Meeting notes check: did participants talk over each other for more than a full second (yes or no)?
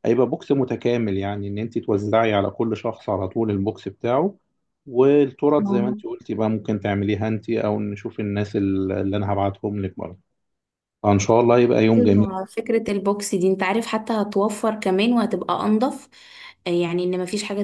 no